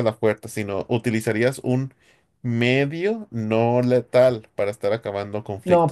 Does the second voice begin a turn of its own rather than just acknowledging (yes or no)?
yes